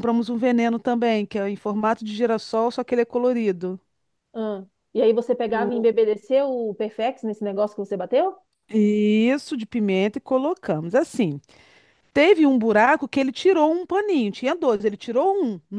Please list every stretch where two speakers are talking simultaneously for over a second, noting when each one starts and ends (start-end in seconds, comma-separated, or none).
none